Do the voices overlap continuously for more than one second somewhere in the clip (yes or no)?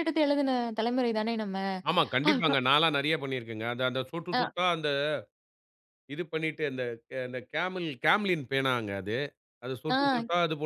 no